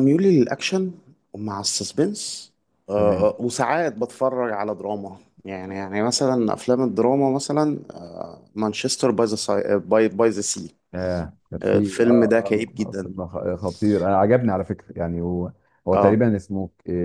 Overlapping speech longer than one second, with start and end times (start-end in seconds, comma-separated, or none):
11.6-13.1